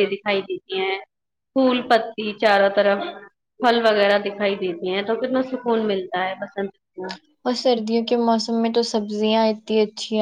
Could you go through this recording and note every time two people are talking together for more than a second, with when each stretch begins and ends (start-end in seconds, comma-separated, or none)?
none